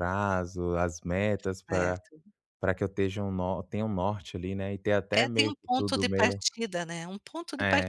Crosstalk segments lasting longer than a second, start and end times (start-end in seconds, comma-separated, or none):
5.1-6.4